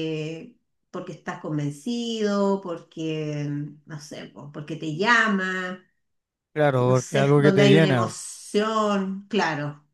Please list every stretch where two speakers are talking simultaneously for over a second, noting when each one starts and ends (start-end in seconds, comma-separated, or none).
6.6-8.1